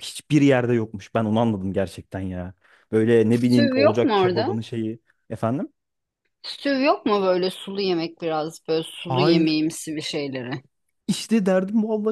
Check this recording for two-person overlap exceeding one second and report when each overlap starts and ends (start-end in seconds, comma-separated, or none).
3.3-4.6